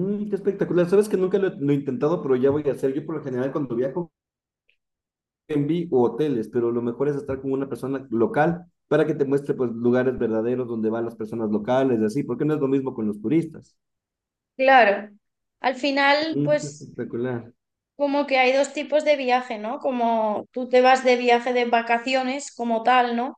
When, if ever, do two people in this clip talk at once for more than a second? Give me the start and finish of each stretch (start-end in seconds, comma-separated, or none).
none